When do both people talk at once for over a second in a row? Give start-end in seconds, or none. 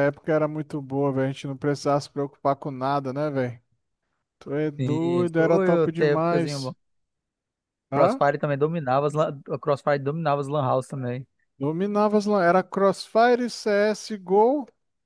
4.8-6.7